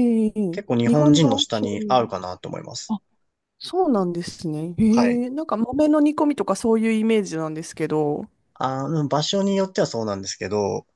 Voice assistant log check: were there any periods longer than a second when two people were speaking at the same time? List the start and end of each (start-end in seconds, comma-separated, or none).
0.5-2.0